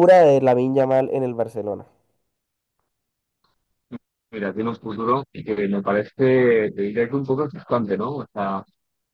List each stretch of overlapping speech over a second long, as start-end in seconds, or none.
none